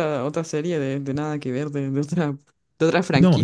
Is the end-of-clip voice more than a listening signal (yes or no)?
yes